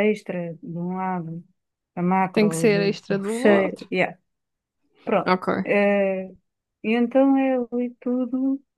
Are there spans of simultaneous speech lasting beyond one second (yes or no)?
yes